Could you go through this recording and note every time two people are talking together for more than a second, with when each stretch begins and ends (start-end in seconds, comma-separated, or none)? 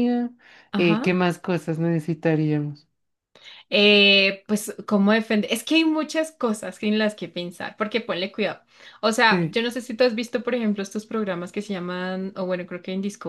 none